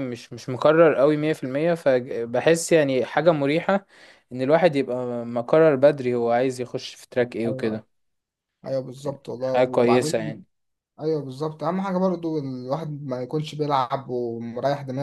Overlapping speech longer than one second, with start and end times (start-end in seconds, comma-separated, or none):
9.0-10.4